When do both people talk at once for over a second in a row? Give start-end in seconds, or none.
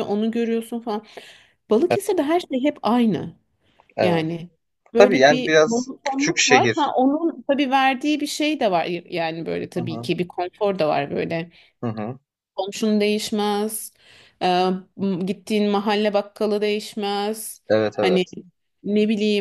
5.0-6.9